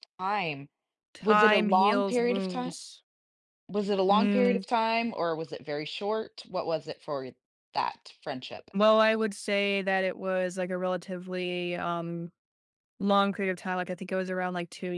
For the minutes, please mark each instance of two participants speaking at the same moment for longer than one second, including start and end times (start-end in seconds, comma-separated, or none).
1.2-2.7